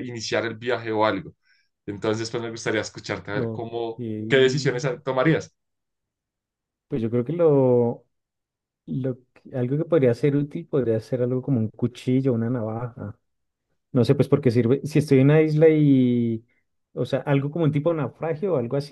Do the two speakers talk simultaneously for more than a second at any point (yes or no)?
no